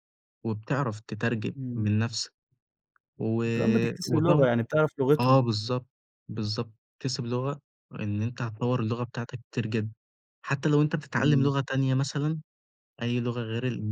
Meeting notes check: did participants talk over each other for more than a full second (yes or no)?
no